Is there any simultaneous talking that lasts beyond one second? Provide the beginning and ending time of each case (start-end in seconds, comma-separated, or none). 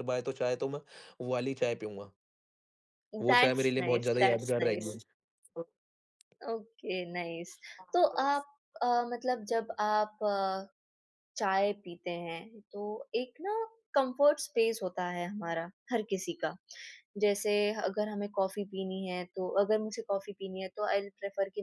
3.3-5.0